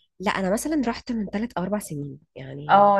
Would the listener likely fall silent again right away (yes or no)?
no